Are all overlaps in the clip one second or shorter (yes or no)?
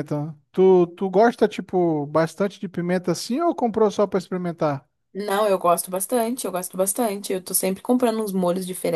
yes